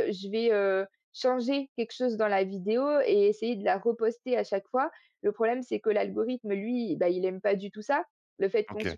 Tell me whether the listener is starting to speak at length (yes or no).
no